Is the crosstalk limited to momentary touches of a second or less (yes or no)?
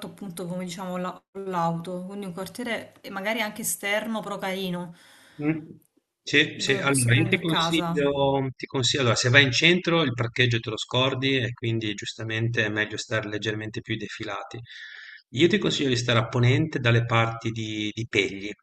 no